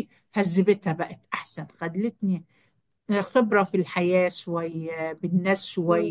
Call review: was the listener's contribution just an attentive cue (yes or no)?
yes